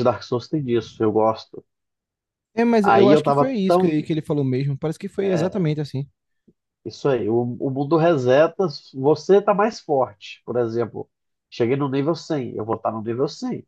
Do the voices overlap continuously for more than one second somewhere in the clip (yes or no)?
yes